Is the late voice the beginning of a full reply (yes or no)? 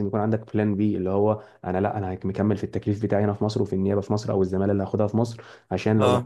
no